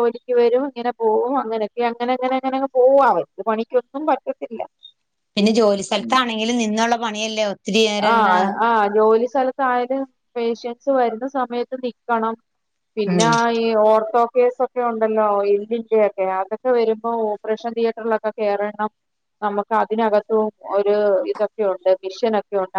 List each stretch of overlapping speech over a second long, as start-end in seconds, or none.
none